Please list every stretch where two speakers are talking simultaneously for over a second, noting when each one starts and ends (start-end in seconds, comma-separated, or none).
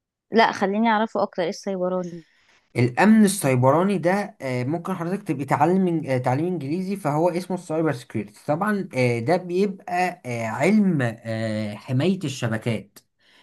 none